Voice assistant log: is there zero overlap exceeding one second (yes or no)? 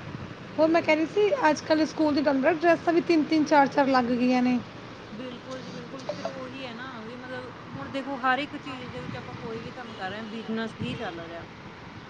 yes